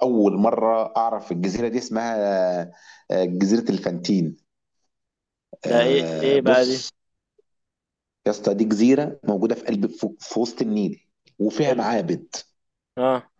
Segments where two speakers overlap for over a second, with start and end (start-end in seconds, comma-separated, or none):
5.7-6.9